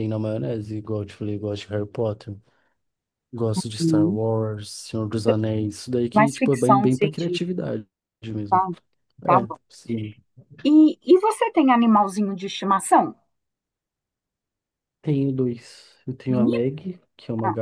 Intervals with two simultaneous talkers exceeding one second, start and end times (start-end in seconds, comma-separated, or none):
6.1-7.5